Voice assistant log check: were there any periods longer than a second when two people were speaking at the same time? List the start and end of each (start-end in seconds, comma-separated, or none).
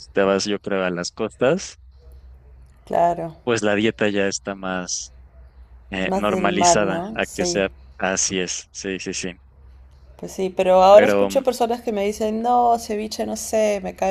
6.0-7.6